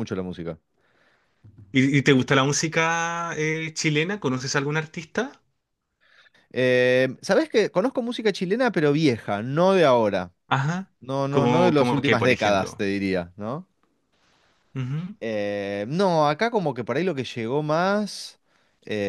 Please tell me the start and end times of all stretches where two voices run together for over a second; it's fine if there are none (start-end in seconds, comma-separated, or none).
11.3-12.9